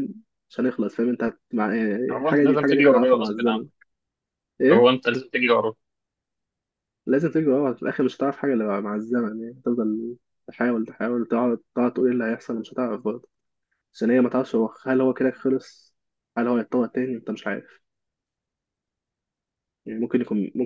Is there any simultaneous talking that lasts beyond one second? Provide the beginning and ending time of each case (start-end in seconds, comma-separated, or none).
2.1-3.6